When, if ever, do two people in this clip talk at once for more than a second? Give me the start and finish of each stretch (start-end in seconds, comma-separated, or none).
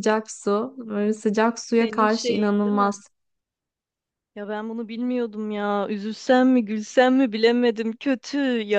1.8-3.0